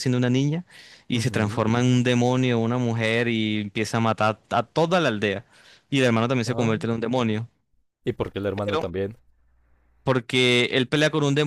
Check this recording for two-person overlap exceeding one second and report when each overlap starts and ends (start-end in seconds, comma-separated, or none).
none